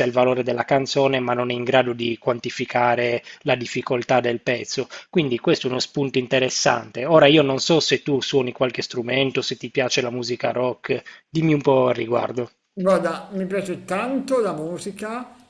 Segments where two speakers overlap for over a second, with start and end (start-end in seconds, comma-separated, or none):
none